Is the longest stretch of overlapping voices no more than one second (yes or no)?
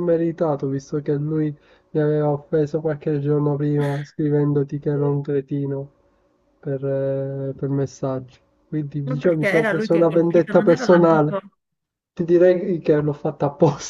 no